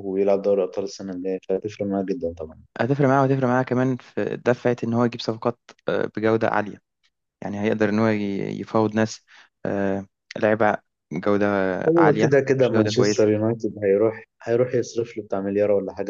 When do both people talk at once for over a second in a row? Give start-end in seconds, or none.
12.0-13.3